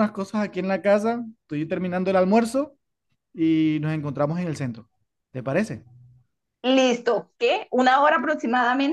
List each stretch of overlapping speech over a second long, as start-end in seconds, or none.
none